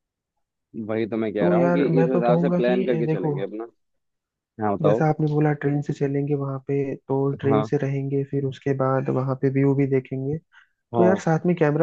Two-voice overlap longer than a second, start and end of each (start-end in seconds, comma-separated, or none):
1.4-3.4